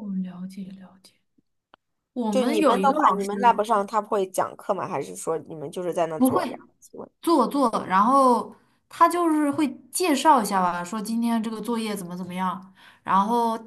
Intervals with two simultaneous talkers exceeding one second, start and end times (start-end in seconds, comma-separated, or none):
2.3-3.6